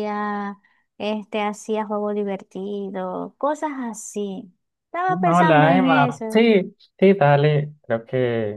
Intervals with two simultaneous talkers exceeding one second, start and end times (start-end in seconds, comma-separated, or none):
5.1-6.4